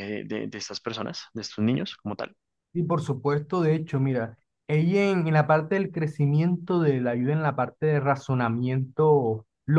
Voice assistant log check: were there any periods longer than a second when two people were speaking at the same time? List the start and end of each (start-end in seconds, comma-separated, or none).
none